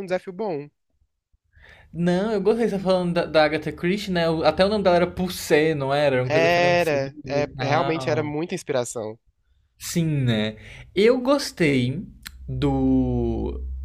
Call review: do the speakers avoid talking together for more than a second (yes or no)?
no